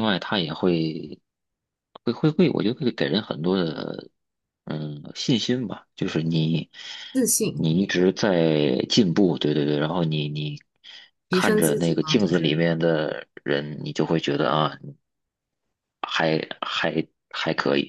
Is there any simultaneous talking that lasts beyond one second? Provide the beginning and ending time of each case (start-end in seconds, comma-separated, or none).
11.3-12.6